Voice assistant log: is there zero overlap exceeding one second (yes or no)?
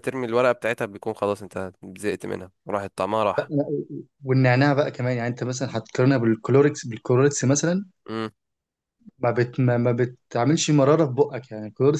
yes